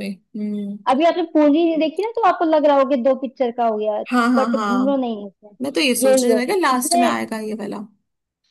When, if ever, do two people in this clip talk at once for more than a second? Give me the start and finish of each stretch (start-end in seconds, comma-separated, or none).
5.6-7.2